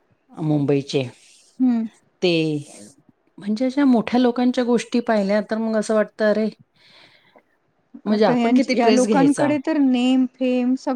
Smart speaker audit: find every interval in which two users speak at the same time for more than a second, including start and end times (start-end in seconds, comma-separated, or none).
8.1-9.5